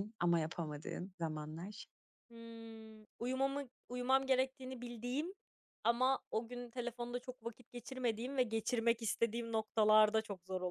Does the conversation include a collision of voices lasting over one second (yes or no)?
no